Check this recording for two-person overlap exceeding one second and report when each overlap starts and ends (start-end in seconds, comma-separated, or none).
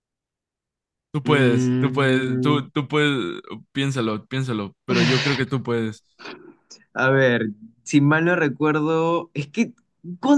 1.2-2.6